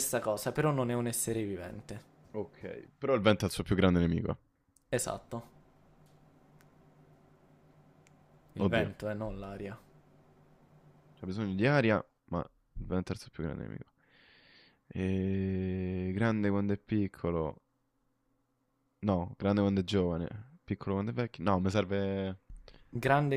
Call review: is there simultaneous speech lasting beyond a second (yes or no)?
no